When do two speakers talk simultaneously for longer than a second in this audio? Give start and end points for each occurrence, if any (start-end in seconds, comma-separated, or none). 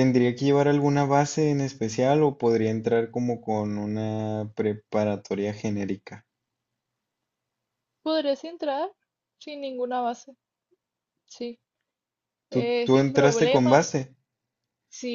12.5-13.8